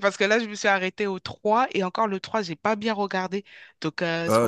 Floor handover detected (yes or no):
no